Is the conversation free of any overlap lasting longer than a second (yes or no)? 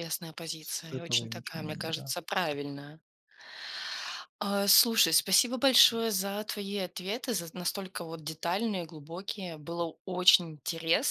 no